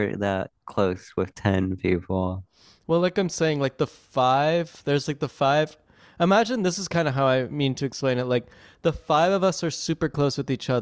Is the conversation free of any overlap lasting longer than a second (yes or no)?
yes